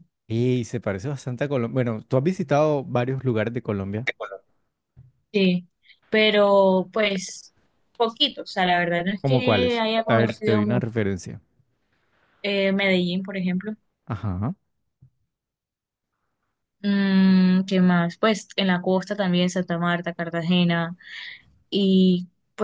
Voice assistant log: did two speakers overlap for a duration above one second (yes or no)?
yes